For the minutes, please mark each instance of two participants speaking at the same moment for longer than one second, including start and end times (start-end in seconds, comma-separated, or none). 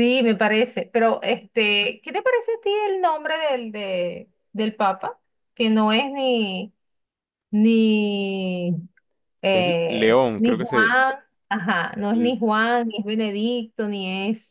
9.5-10.9